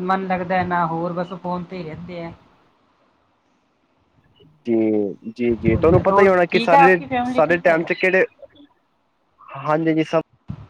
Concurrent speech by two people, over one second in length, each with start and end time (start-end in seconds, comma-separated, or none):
5.7-7.8